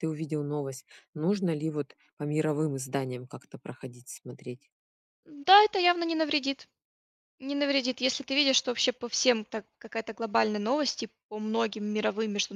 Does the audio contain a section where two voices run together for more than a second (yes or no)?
no